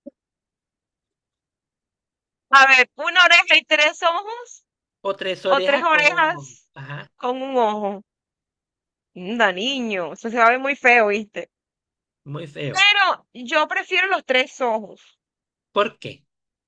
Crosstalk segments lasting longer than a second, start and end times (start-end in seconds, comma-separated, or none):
5.4-6.7